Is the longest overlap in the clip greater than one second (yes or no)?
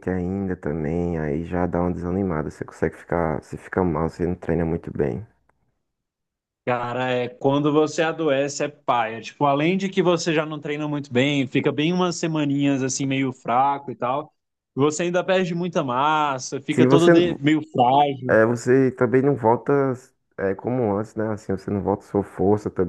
no